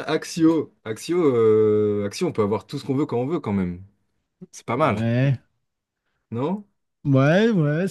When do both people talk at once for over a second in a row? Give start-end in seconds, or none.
none